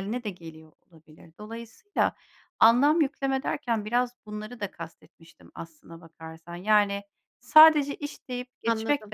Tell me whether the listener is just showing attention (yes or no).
yes